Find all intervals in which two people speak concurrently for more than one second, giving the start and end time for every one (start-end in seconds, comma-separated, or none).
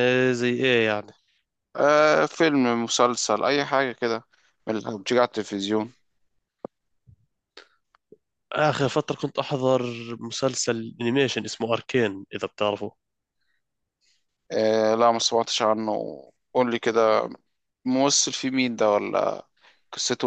none